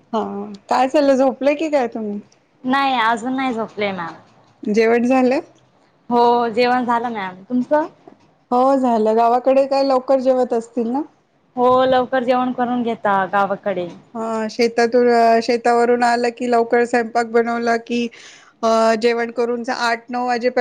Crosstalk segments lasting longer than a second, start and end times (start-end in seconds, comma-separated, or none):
none